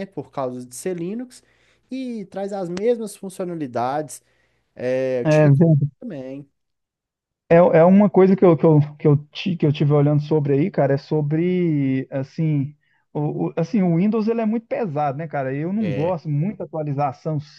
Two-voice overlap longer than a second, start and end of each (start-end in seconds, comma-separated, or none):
none